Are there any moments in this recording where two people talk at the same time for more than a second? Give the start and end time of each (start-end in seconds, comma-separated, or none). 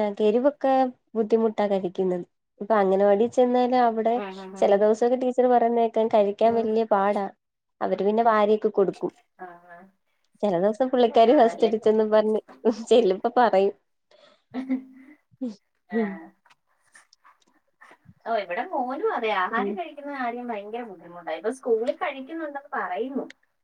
none